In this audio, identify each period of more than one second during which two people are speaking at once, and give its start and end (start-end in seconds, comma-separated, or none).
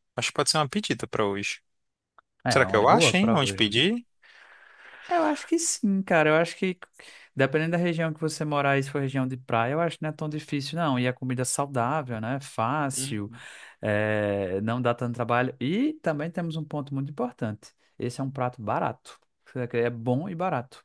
2.5-3.7